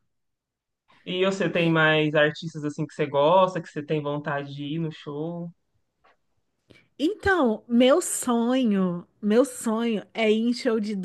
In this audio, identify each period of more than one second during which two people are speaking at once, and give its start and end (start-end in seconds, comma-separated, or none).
none